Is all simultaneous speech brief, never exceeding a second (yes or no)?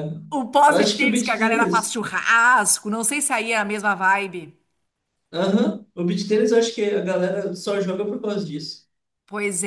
no